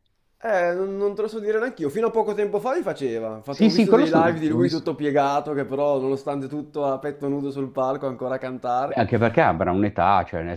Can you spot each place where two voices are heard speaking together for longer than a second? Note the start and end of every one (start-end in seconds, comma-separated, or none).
3.5-4.9